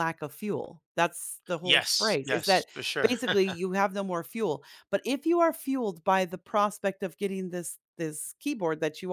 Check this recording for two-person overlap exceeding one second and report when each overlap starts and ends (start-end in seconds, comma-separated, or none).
1.6-3.1